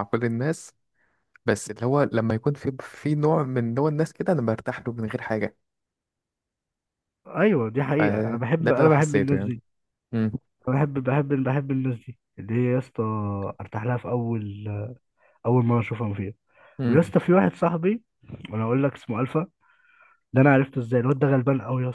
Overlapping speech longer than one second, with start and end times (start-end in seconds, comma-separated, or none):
8.0-9.5